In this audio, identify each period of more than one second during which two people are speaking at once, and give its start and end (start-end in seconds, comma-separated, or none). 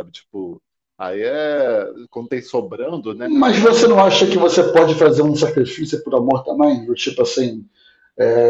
3.4-4.8